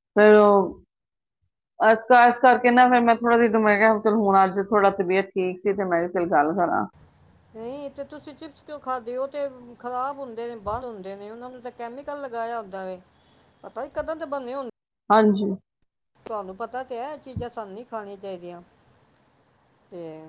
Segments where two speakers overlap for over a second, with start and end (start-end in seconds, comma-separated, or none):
none